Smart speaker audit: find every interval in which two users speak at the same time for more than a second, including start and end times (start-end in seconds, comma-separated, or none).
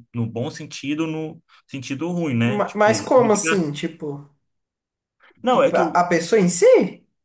2.4-3.7